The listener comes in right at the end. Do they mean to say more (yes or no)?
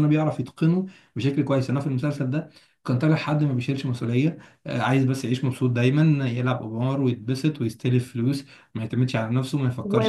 yes